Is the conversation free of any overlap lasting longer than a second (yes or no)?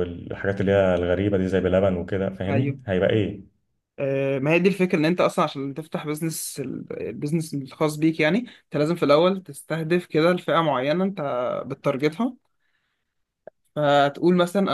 yes